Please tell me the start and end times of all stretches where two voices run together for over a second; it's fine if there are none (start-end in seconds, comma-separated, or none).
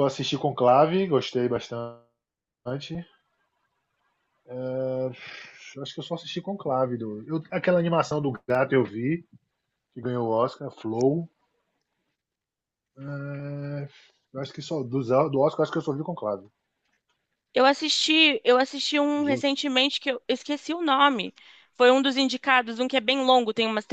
none